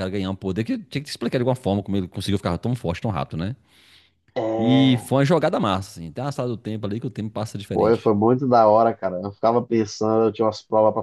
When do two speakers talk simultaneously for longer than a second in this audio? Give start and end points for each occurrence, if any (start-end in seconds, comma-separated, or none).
none